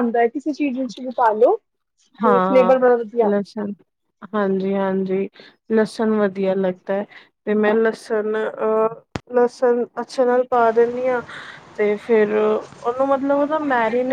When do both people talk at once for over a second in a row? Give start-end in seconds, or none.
none